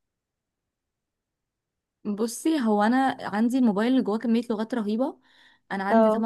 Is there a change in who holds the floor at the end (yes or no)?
no